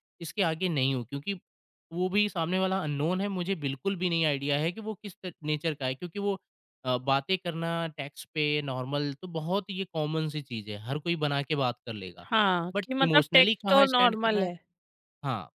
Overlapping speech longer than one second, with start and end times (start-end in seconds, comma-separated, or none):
12.7-14.5